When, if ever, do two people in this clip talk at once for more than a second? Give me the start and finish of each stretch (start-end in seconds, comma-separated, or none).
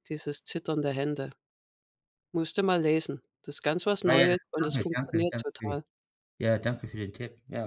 4.0-5.8